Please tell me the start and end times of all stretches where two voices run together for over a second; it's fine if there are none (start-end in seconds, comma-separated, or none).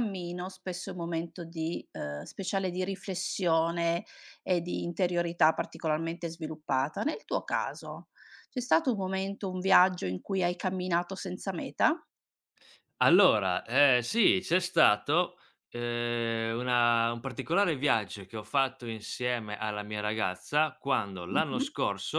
none